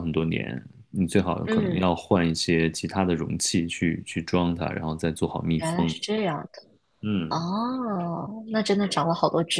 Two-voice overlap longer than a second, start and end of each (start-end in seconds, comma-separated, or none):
none